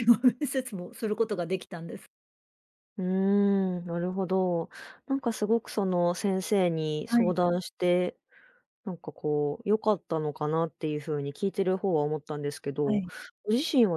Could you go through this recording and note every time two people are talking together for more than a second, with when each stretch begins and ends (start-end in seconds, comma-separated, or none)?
none